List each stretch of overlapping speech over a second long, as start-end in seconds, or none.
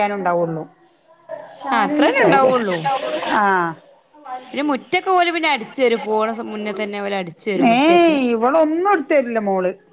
none